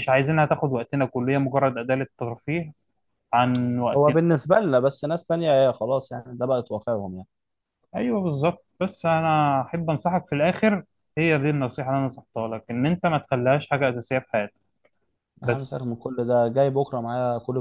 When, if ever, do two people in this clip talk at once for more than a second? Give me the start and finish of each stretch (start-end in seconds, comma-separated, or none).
none